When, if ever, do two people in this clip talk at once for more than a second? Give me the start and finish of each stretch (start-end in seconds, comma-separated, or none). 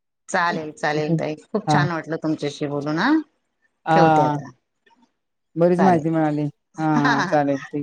none